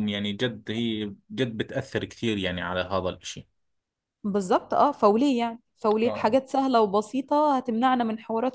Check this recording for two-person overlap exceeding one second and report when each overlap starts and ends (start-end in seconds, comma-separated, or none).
none